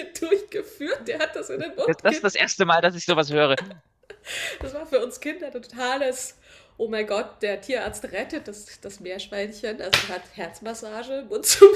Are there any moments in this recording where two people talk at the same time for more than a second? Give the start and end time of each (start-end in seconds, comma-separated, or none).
none